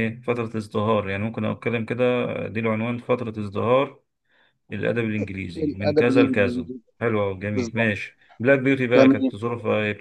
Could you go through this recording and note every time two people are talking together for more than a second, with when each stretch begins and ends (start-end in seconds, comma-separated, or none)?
5.5-6.8